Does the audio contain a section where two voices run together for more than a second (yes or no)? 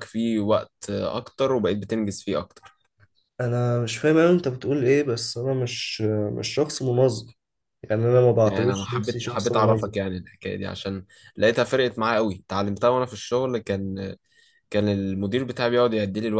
yes